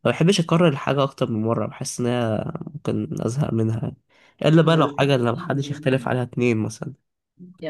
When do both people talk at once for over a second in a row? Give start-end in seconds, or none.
4.6-6.3